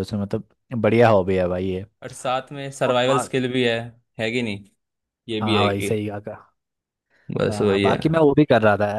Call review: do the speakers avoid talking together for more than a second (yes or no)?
yes